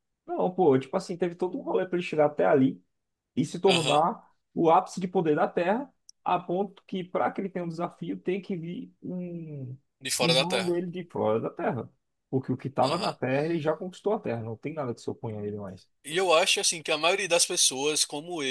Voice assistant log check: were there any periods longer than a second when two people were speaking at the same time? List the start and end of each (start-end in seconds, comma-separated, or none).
none